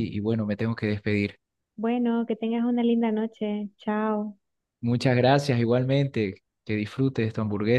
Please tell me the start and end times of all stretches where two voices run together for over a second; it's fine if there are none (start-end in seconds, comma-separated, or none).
none